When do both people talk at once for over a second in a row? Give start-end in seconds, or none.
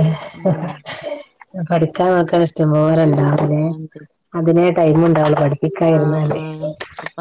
none